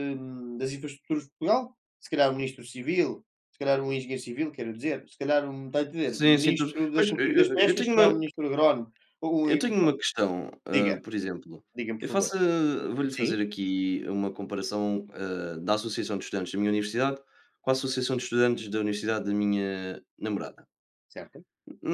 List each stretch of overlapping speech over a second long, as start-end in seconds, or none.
6.0-8.1